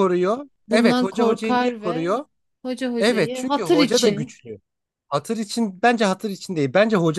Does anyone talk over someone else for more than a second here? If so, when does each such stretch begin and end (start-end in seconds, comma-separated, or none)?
0.7-2.1, 3.0-4.3